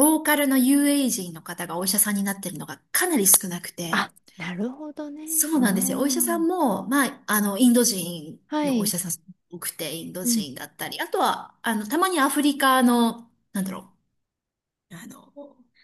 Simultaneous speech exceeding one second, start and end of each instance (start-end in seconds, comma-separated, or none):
5.2-6.7